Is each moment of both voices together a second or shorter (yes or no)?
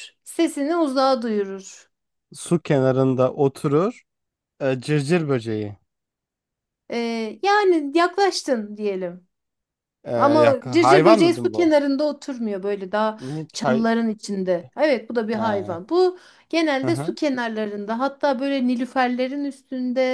no